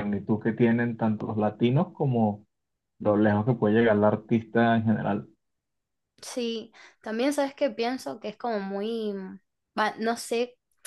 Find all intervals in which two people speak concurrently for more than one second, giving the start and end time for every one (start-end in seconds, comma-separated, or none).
none